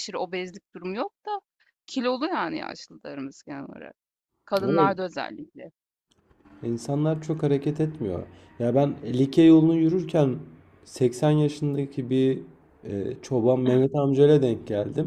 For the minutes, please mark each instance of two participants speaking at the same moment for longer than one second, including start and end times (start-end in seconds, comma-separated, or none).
none